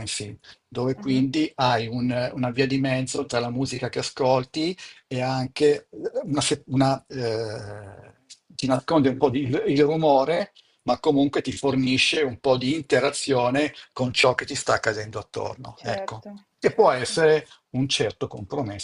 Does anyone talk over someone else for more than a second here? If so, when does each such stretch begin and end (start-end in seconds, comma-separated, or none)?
15.8-17.2